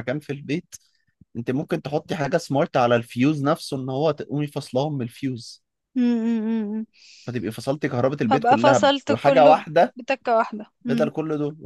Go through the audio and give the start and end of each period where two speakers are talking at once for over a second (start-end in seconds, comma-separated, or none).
8.3-9.9